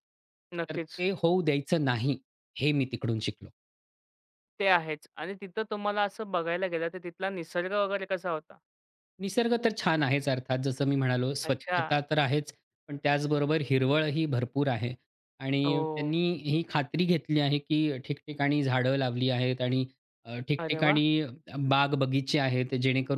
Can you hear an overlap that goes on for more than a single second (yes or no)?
no